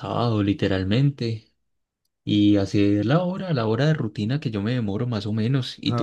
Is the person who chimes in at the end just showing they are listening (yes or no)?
no